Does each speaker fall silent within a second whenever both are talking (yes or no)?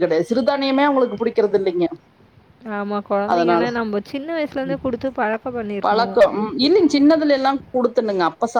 yes